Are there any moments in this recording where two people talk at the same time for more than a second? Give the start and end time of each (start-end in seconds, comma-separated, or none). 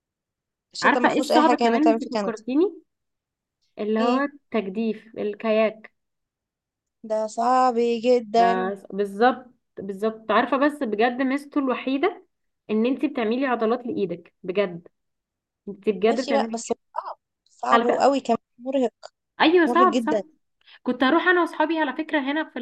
0.8-2.3